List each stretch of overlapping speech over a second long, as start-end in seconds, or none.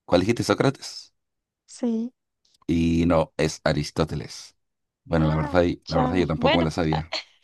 5.2-6.7